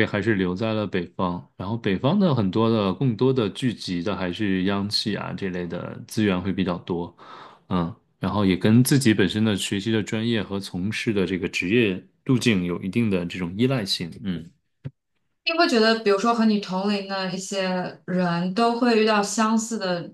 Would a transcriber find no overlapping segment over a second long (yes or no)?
yes